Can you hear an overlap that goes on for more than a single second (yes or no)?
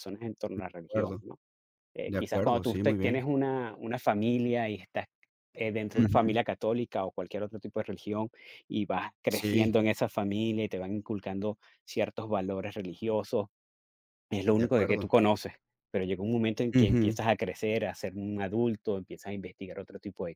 yes